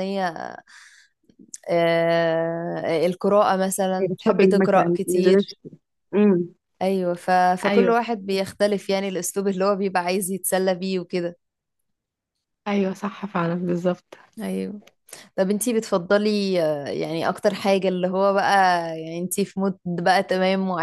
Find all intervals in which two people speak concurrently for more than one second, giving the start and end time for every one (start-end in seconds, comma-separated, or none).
4.0-5.5